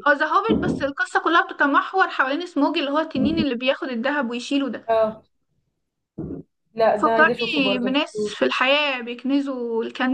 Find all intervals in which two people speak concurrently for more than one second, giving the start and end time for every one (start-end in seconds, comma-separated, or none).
7.0-8.3